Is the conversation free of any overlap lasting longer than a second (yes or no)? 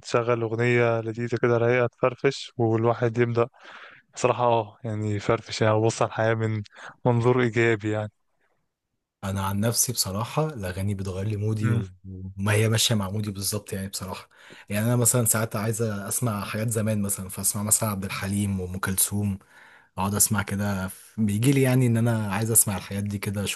yes